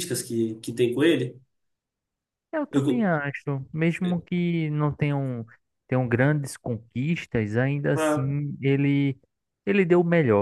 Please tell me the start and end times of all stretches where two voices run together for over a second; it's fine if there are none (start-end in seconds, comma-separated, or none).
none